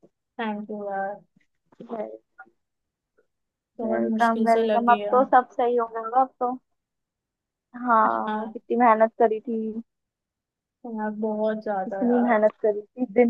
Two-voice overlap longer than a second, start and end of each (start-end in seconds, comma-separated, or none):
3.8-5.2